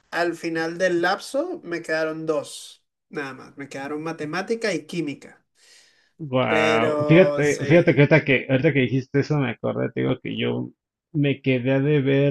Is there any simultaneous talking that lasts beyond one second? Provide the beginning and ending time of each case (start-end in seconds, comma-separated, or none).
6.5-7.9